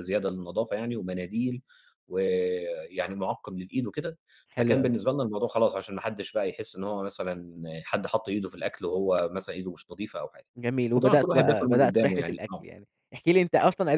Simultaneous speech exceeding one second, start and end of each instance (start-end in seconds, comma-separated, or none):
10.9-12.7